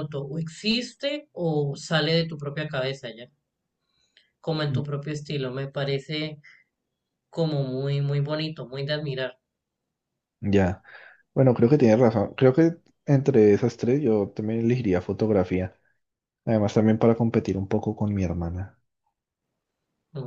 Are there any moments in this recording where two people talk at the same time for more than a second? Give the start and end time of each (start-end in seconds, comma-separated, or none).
none